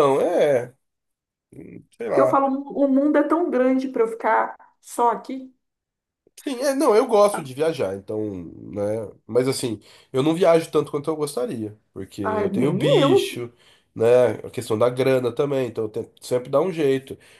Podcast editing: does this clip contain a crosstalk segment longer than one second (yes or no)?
yes